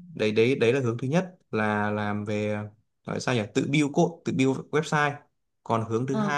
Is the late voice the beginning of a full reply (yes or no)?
no